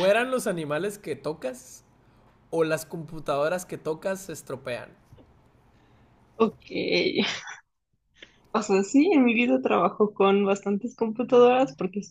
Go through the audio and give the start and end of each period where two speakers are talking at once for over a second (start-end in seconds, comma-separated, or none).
none